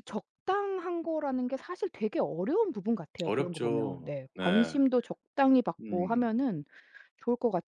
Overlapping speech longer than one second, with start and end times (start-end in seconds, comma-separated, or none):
3.2-4.8